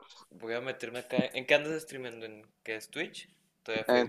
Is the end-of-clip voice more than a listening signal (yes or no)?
yes